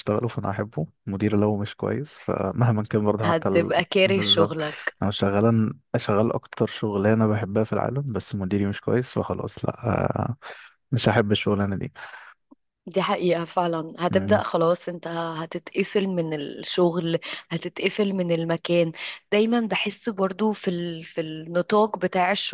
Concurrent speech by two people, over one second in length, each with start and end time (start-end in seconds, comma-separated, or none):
3.2-4.6